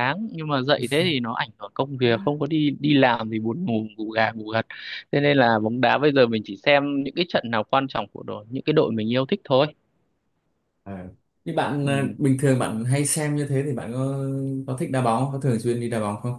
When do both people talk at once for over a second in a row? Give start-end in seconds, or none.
none